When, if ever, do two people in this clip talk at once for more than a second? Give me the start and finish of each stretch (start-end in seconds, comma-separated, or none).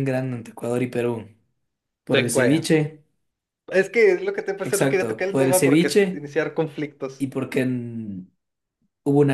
4.6-6.3